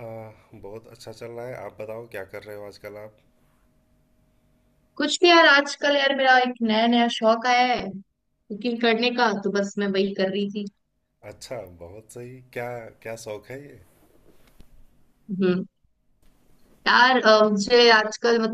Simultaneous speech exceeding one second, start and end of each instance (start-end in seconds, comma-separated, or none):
none